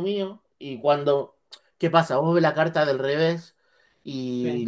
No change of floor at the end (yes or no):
yes